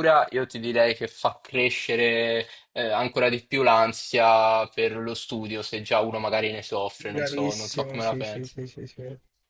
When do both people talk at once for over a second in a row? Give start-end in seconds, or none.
7.0-8.6